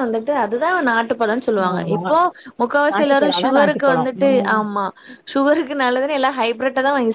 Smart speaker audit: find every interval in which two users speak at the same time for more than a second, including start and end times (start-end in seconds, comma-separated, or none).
2.9-4.6